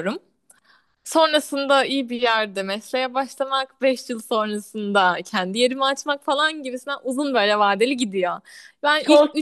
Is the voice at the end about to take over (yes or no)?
no